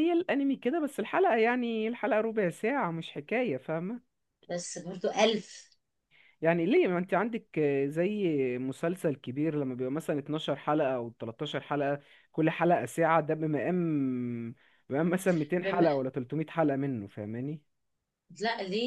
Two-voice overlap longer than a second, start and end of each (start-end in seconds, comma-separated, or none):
none